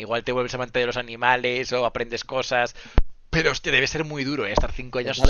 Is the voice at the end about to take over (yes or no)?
yes